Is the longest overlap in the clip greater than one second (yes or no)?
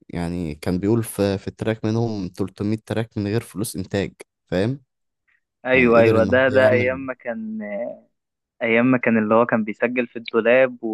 yes